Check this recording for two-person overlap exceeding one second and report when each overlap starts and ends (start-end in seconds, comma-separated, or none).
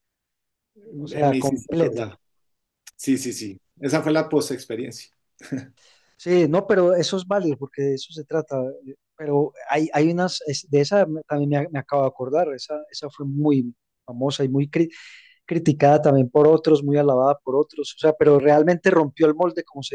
1.0-2.2